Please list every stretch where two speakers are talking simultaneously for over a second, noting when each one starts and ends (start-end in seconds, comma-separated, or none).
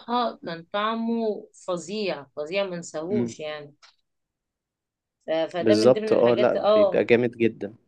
5.6-7.0